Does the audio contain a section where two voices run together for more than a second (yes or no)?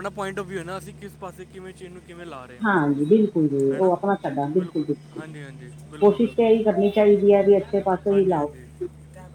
yes